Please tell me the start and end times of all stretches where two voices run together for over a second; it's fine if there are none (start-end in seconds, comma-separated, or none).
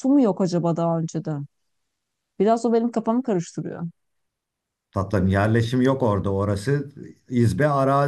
none